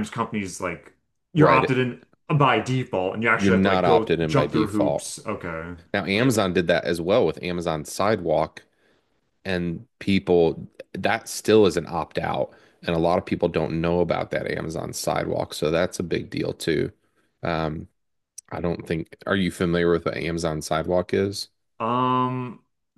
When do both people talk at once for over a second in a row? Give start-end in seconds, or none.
3.3-5.1